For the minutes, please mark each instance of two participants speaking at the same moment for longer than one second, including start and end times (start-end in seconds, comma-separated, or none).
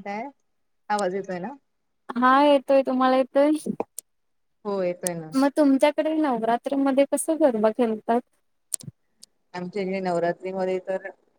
none